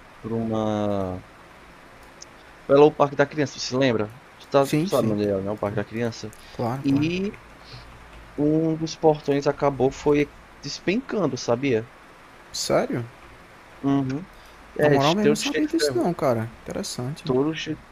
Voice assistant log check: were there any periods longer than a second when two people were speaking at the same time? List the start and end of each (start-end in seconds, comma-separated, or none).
14.8-16.1